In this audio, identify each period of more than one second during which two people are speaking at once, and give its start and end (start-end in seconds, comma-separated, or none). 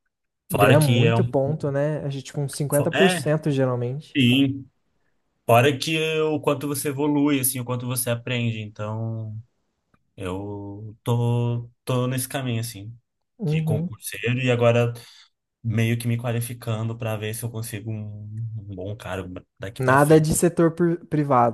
none